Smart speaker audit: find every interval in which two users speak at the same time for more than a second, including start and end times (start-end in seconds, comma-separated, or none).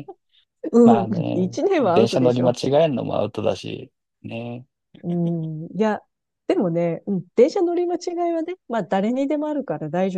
0.8-2.6